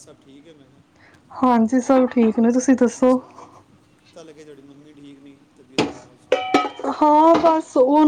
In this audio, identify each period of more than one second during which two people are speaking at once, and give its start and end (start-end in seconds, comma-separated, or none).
none